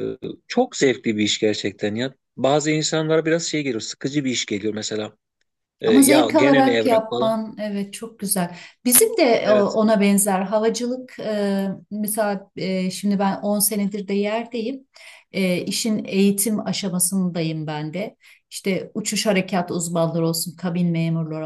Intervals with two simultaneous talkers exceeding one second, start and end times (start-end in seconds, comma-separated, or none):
5.9-7.4